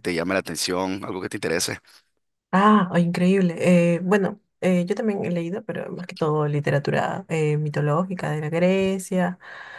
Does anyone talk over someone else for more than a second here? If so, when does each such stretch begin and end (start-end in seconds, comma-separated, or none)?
none